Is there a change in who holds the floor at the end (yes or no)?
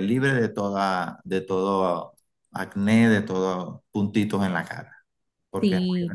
yes